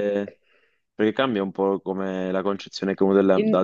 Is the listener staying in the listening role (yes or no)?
yes